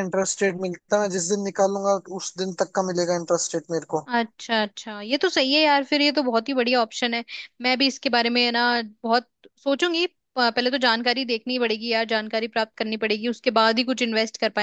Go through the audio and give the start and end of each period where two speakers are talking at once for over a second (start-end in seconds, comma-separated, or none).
none